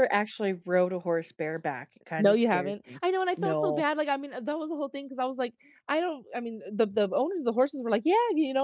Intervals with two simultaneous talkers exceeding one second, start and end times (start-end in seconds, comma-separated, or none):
2.2-3.9